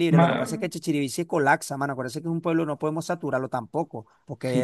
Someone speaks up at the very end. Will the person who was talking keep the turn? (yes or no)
no